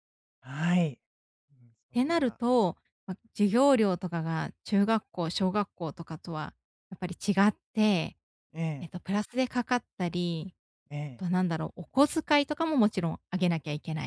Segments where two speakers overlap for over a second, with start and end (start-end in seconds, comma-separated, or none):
none